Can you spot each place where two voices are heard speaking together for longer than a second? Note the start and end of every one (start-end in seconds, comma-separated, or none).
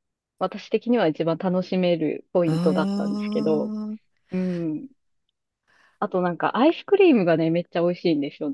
2.5-3.7